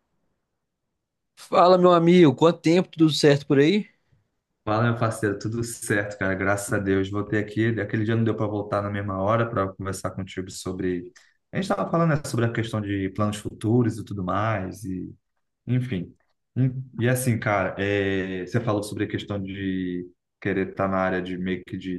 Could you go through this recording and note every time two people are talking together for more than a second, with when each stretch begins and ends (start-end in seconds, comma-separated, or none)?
none